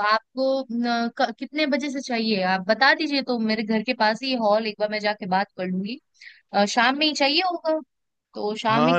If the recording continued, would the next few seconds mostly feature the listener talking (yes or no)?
yes